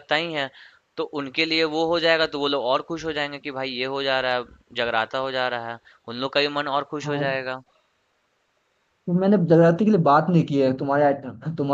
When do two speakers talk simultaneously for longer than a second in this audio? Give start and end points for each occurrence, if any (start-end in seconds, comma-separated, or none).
none